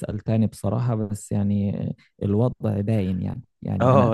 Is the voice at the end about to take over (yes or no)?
yes